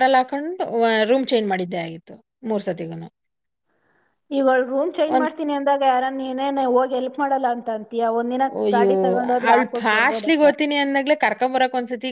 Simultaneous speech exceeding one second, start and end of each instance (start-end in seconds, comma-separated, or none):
none